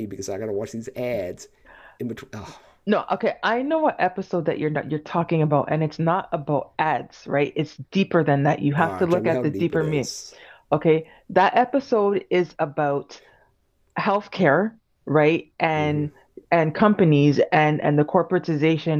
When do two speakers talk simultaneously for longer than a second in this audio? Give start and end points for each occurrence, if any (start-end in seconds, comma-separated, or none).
8.8-10.1